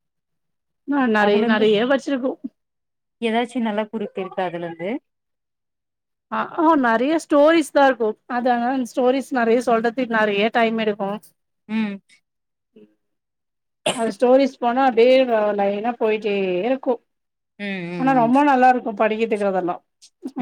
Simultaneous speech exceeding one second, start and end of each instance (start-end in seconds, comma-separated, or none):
none